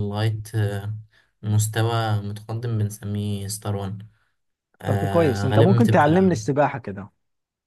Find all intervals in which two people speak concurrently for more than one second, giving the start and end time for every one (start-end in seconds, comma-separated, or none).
4.9-6.3